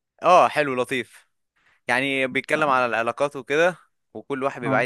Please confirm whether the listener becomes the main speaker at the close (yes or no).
no